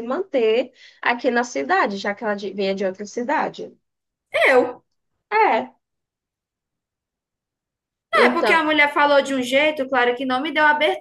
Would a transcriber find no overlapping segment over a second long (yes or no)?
yes